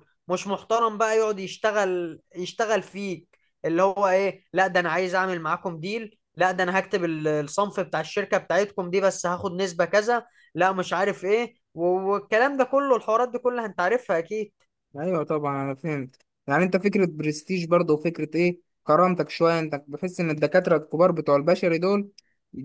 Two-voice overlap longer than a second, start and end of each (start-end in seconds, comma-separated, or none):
none